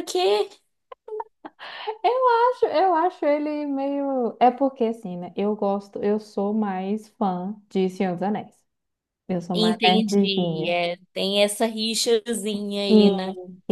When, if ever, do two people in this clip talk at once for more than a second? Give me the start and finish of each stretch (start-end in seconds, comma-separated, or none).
9.5-10.8